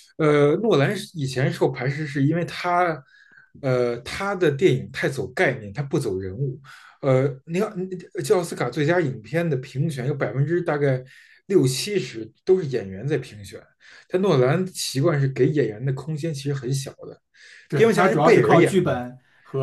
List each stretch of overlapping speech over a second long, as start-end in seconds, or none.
17.7-19.0